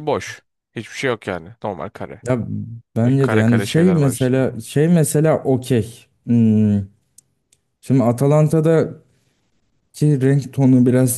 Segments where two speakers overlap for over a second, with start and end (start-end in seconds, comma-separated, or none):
3.0-4.6